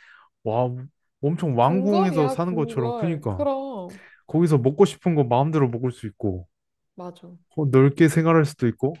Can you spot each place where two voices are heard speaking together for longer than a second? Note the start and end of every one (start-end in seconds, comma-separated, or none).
1.6-3.4